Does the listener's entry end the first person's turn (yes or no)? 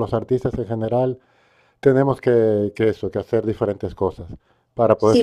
yes